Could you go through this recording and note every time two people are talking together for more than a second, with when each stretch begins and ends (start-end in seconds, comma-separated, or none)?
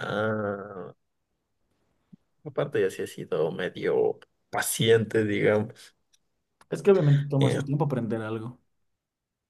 none